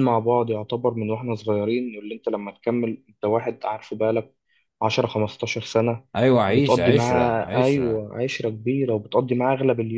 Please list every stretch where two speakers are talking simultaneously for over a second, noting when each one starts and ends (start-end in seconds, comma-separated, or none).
6.5-8.1